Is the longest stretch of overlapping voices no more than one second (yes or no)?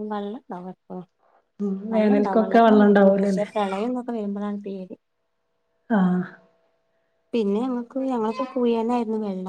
no